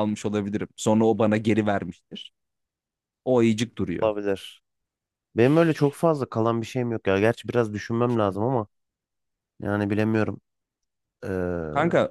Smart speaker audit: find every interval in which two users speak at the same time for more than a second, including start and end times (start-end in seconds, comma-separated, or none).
none